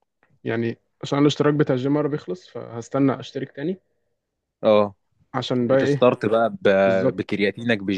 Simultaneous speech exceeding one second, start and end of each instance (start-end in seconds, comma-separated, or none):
none